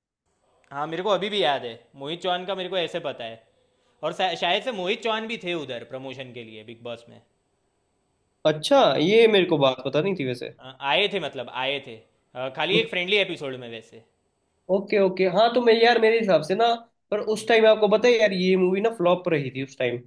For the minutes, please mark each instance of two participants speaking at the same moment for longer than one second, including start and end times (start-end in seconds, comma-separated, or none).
none